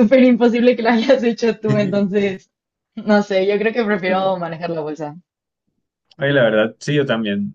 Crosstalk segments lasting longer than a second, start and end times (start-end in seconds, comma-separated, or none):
none